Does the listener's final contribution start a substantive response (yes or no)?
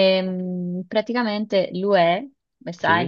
no